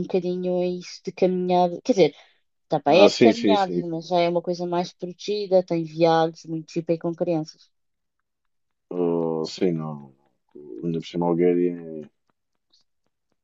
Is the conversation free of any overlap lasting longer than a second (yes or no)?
no